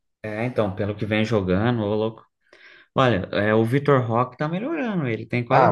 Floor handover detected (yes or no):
yes